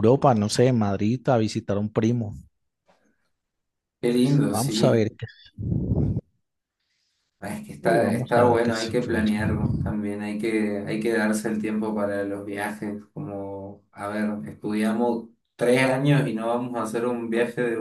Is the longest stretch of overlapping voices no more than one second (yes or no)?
no